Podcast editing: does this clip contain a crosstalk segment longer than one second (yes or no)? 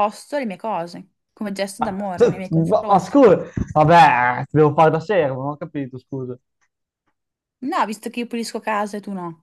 yes